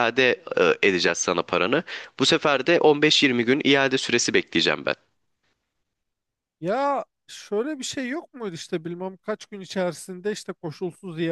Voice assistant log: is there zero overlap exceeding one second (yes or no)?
yes